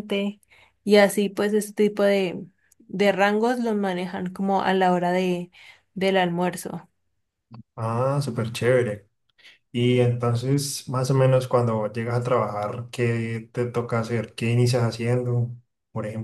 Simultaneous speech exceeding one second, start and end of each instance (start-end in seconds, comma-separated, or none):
none